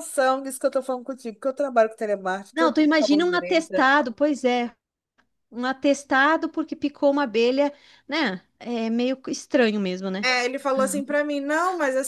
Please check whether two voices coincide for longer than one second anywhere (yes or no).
yes